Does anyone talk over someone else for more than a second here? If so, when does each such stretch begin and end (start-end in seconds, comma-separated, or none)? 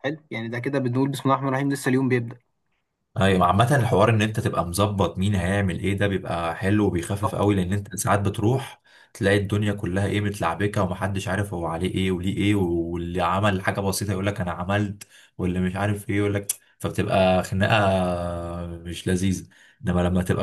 none